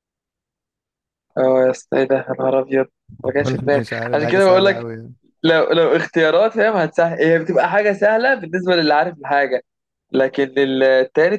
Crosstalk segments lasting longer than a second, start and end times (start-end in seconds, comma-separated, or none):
3.4-4.9